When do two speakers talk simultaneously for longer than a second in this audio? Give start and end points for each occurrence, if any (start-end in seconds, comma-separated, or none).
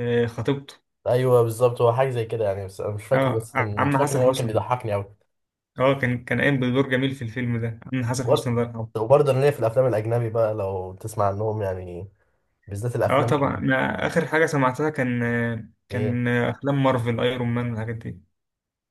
3.1-4.6